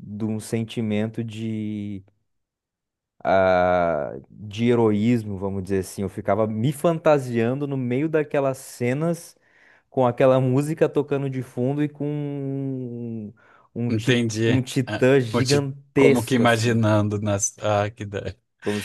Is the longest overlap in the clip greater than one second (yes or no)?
yes